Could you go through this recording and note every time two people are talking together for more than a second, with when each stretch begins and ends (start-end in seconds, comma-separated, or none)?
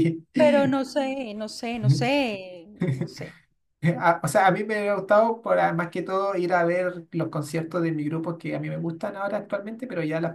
none